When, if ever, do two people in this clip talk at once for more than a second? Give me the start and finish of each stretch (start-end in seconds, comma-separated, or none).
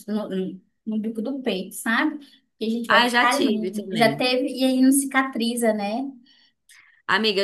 2.9-4.3